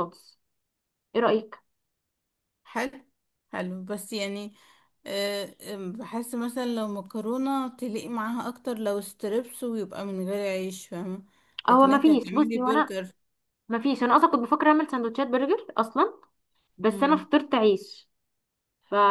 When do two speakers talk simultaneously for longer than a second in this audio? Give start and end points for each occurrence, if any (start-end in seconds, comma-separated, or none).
11.7-12.9